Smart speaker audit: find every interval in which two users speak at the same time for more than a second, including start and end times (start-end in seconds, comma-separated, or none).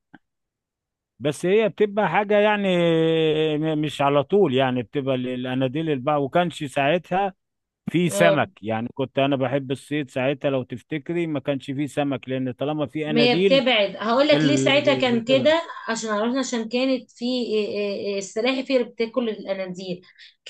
14.3-15.6